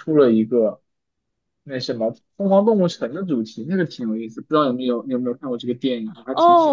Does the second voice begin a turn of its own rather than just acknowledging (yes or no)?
yes